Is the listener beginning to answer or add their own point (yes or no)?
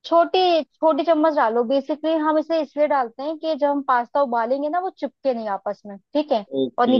yes